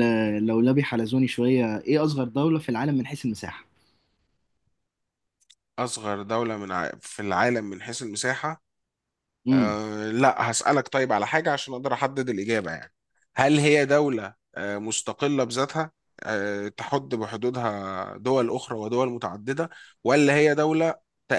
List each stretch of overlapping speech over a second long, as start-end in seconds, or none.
none